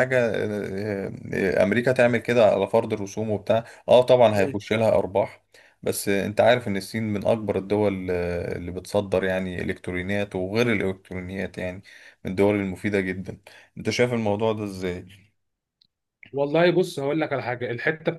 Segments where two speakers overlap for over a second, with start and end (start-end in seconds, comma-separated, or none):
none